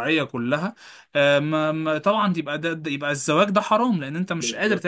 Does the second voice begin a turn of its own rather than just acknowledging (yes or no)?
yes